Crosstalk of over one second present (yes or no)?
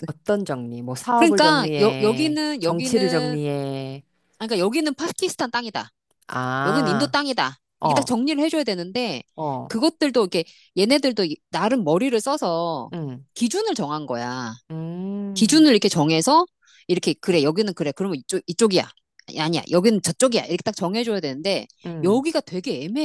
yes